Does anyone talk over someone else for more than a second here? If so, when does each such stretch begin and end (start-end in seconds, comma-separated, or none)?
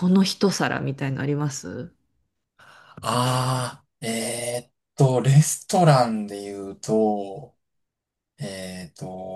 none